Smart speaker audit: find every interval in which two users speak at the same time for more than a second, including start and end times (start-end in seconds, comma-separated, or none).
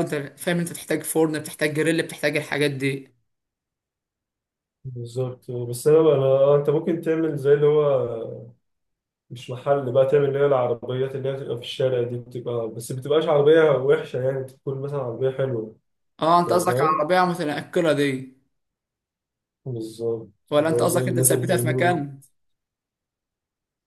20.5-21.9